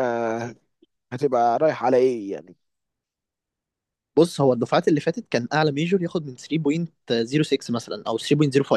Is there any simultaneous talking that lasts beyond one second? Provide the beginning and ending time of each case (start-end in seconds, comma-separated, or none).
none